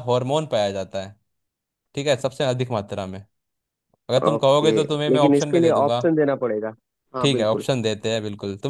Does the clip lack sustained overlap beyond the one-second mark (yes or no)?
no